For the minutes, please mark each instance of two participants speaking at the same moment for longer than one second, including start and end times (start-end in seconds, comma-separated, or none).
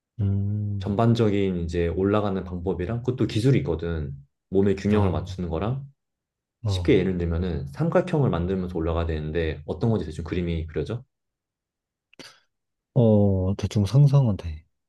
none